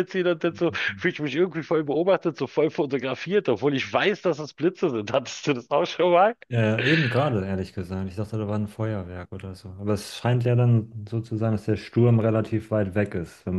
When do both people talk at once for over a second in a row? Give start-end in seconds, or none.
none